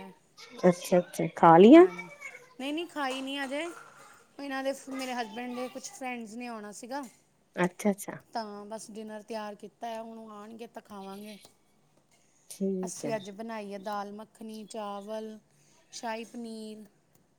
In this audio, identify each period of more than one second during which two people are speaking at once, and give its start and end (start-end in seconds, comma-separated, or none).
none